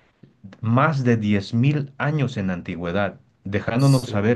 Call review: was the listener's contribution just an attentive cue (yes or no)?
yes